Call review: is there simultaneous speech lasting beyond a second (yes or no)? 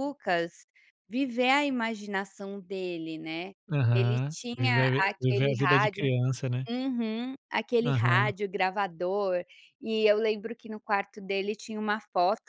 yes